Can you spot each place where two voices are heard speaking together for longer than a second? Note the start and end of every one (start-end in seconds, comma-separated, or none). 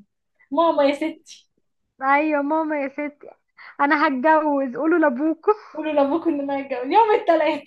none